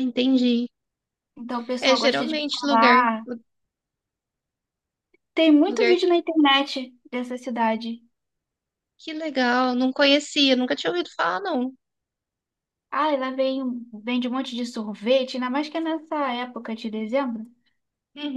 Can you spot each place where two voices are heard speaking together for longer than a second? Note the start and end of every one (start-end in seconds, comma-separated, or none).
1.8-3.1